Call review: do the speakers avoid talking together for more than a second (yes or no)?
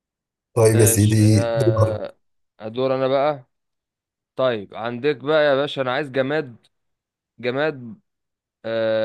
no